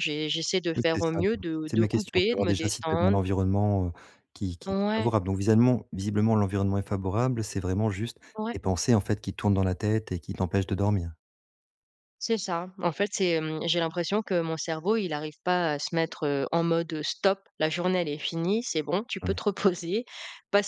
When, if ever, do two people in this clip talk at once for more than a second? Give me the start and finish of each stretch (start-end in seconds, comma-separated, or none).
0.8-3.2